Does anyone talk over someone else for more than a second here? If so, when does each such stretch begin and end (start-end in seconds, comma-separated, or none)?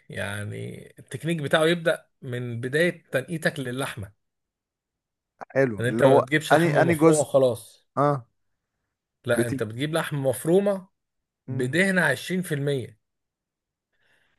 5.8-7.3